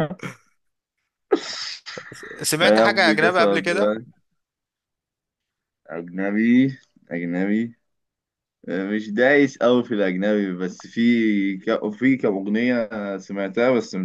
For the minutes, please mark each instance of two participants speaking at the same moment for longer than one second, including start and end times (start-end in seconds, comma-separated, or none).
2.6-4.0